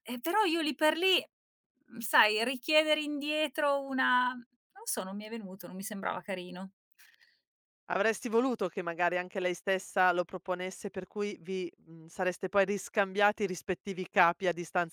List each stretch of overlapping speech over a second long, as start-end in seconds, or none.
none